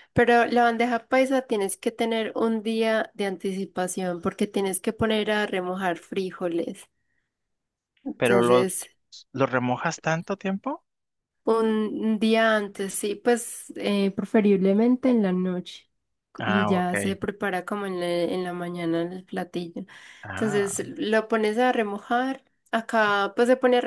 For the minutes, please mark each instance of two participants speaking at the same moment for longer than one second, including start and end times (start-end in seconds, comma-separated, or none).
none